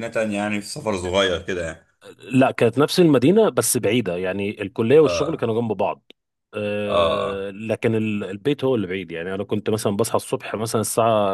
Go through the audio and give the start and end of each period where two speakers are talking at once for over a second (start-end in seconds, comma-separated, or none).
none